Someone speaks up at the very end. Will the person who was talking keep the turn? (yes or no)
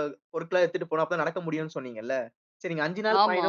yes